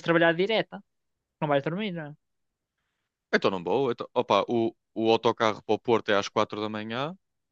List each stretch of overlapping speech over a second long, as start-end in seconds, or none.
none